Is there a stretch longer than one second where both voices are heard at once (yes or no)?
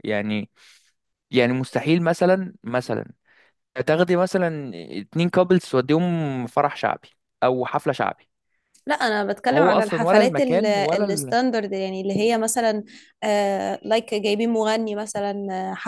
yes